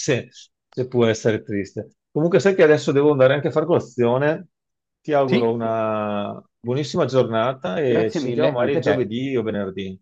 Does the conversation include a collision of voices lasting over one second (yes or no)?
yes